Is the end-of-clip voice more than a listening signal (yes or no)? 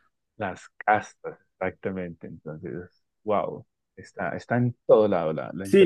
yes